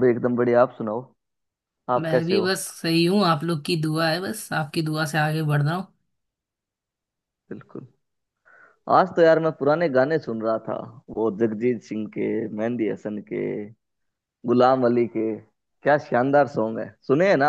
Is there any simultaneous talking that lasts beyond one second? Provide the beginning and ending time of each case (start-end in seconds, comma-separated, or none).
none